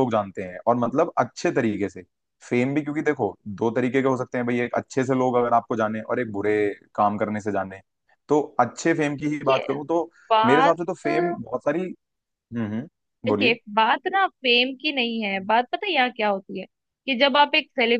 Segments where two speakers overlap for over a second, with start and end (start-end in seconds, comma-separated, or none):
none